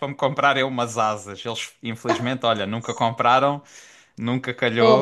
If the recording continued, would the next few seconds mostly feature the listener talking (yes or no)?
no